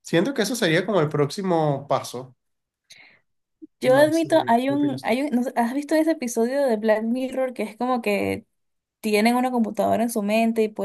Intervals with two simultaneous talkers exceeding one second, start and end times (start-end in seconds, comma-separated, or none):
3.8-5.1